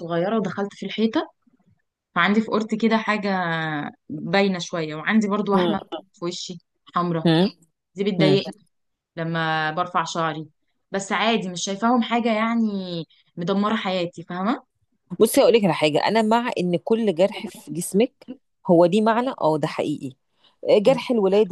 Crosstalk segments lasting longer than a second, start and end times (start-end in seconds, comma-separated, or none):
none